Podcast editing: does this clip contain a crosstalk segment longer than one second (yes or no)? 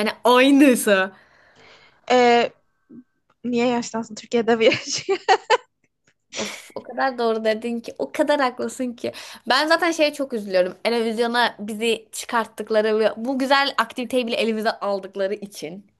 no